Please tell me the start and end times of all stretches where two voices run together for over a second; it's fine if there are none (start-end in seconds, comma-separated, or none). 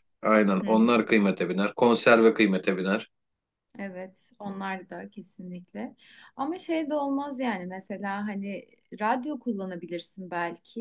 none